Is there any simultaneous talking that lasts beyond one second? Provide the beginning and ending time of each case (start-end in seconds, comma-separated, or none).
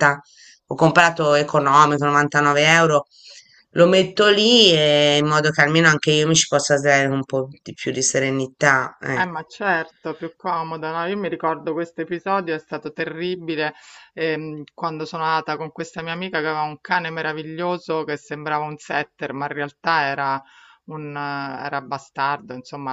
none